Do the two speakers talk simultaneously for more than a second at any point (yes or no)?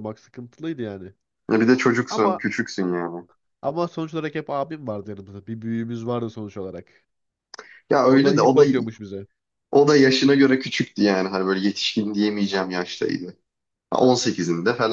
no